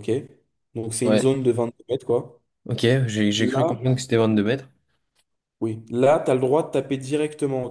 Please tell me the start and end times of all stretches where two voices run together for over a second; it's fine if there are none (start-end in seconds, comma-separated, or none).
none